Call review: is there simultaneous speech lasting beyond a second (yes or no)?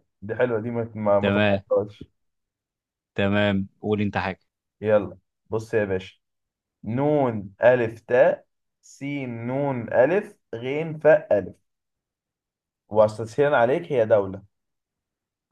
no